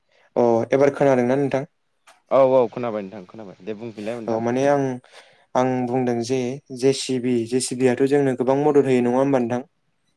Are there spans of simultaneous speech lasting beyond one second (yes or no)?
no